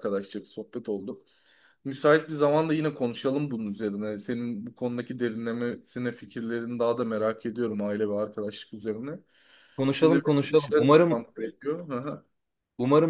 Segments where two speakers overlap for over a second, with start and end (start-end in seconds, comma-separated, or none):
9.9-11.2